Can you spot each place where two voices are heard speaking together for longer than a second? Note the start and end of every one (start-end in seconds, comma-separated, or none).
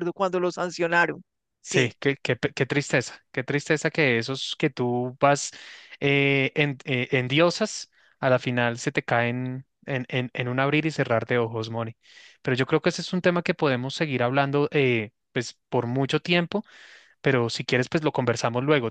none